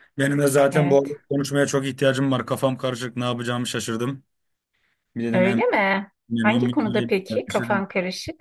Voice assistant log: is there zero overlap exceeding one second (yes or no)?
no